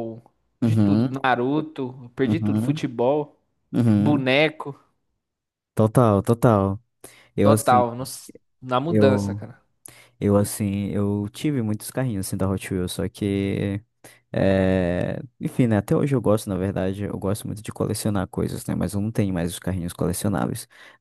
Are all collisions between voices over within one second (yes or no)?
yes